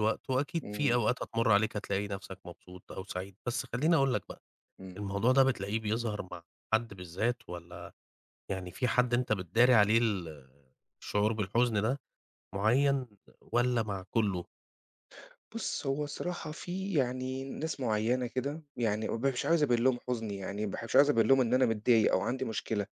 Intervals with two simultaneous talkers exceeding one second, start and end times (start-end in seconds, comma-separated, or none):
none